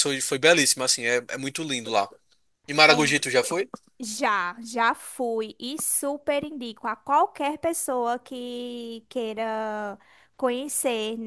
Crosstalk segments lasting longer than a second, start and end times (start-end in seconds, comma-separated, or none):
none